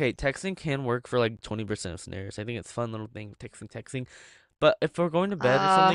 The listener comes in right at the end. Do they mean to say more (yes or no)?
no